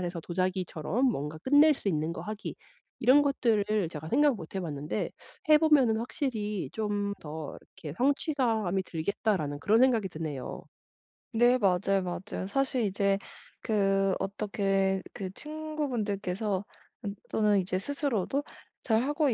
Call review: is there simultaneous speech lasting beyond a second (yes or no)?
no